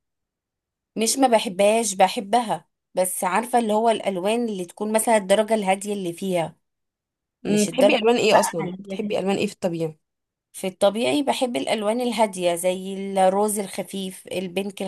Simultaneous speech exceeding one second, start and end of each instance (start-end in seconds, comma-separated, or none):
7.5-9.3